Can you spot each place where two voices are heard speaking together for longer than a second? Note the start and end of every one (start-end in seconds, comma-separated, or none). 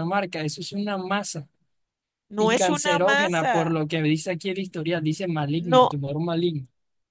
2.4-3.7